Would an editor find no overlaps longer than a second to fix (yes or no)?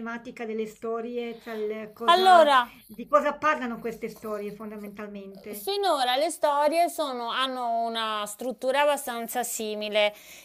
yes